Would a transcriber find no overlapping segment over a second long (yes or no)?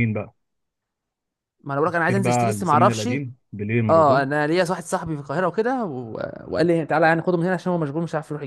no